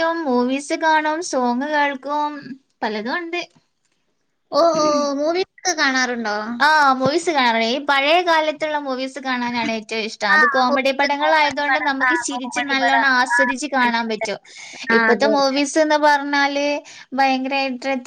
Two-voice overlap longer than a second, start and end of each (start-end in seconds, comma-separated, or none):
10.3-13.1